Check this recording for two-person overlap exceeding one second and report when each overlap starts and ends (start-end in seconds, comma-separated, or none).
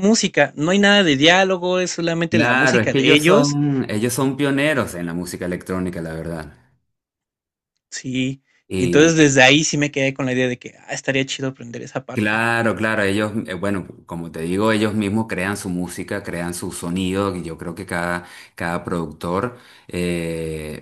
2.3-3.6